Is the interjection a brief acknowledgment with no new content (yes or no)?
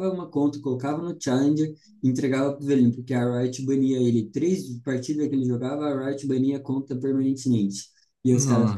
yes